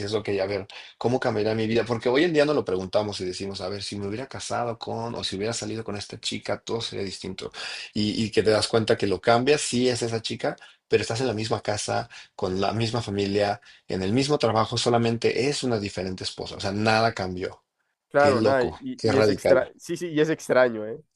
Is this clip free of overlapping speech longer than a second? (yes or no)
no